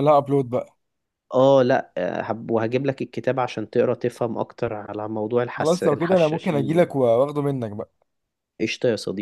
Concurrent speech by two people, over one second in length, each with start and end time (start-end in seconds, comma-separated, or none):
5.6-6.9